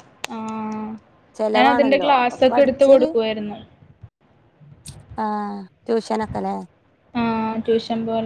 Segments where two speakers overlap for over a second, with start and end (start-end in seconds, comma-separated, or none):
1.6-3.1